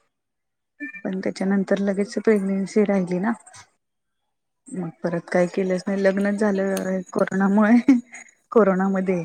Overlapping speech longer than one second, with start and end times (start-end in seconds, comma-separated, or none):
5.3-6.9